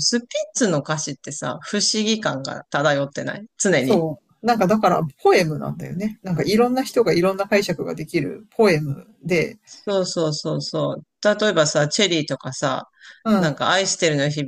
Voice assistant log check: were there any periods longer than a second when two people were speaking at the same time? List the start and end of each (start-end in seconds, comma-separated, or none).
none